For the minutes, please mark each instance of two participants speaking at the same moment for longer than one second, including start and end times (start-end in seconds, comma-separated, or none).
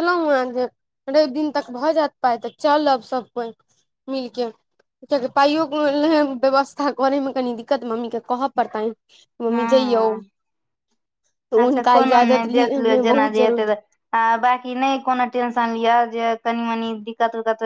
11.6-13.8